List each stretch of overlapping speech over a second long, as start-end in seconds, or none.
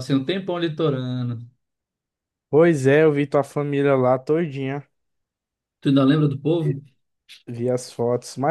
none